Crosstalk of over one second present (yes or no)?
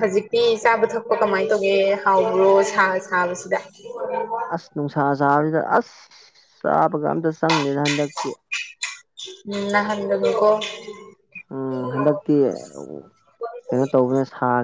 no